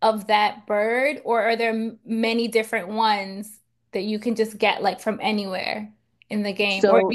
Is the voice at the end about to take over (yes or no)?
no